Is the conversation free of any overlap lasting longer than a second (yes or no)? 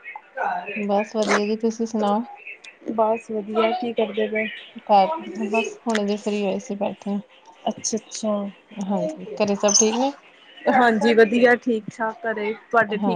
yes